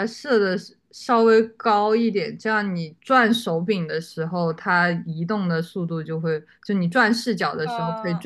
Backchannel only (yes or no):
yes